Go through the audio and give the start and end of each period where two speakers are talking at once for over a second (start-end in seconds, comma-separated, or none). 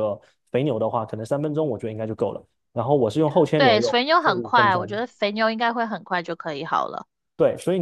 3.5-5.0